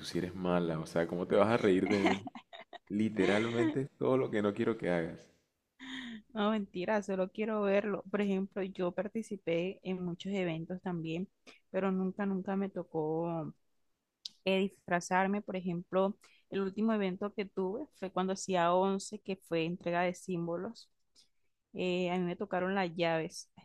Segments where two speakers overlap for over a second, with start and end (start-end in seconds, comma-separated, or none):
none